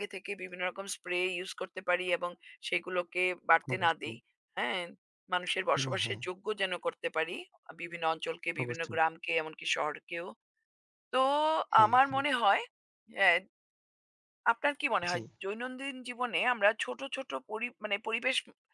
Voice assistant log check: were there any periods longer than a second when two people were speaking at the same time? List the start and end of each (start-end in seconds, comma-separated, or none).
none